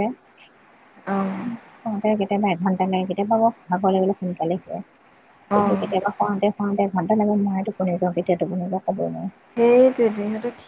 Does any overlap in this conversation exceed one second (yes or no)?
no